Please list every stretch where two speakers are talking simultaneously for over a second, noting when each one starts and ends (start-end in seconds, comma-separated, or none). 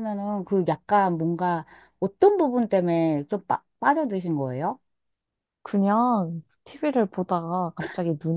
none